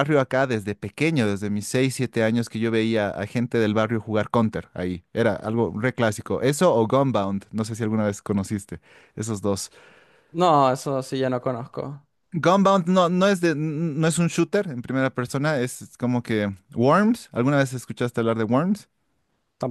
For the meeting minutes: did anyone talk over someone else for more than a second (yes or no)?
no